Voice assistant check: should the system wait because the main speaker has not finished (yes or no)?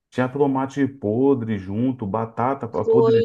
yes